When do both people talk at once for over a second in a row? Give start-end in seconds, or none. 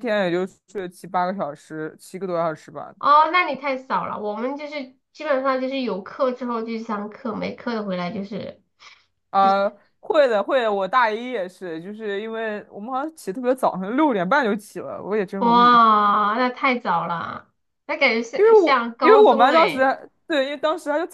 18.4-19.9